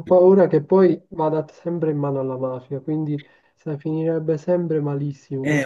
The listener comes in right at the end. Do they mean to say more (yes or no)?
yes